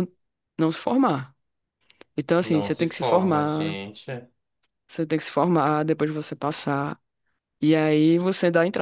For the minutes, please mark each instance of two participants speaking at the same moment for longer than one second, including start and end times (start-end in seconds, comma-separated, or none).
2.4-3.8